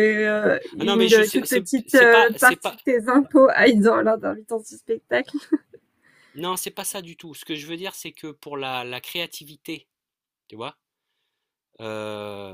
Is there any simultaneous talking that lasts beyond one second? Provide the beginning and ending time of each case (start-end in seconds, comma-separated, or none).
0.8-2.8